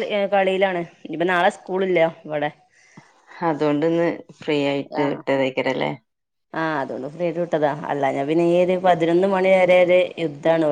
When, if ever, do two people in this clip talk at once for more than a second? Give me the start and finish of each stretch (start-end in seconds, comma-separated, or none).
none